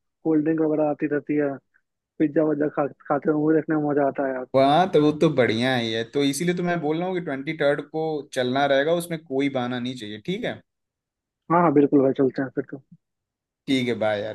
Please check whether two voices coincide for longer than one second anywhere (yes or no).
no